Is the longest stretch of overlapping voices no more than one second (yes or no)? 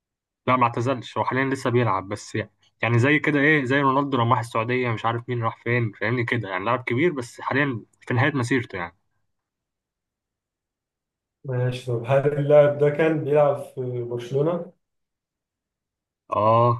yes